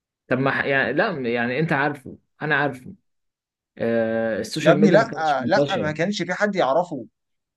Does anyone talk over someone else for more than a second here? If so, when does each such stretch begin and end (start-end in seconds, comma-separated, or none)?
4.6-6.0